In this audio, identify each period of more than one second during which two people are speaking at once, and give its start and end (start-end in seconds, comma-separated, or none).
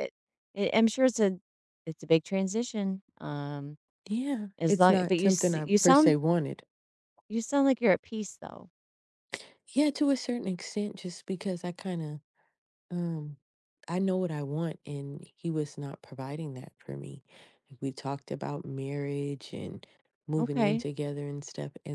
4.6-6.2